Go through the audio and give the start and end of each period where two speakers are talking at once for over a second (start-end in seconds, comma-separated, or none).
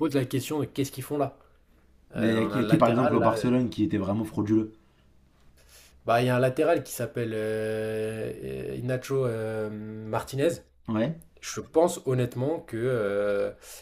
2.2-3.5